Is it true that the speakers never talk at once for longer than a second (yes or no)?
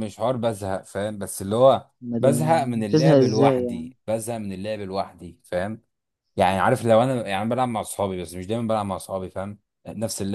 no